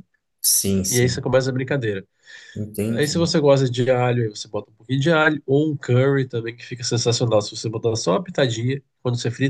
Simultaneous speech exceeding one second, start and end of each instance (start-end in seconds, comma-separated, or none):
none